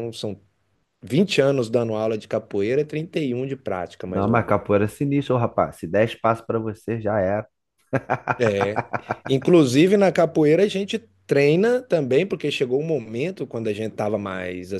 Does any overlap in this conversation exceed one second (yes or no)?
no